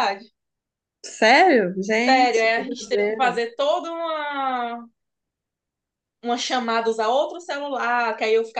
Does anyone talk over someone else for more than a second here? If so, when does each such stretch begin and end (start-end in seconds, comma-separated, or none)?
1.9-3.4